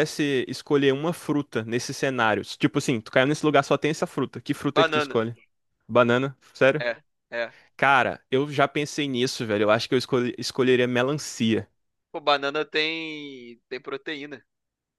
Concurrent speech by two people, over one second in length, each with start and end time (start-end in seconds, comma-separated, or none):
none